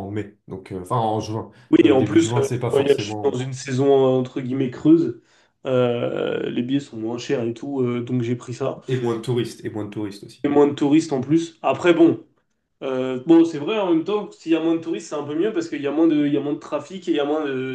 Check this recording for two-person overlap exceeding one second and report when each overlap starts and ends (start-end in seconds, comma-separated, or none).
1.7-3.4